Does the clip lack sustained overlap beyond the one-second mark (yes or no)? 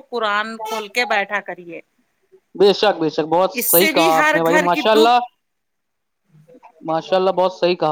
no